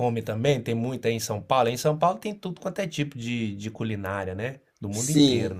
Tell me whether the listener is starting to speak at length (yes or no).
yes